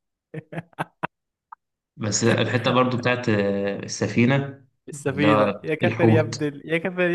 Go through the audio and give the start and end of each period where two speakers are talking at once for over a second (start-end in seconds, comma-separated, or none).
5.1-6.4